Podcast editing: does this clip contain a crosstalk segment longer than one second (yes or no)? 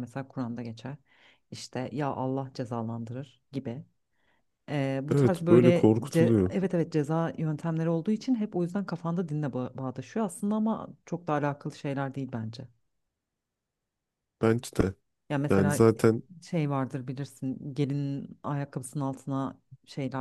yes